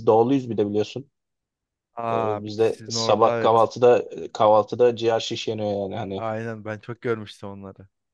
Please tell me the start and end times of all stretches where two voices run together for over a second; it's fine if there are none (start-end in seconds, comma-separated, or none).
2.1-3.7